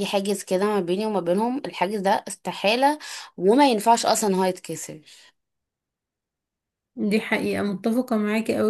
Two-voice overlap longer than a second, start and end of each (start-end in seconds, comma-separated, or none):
none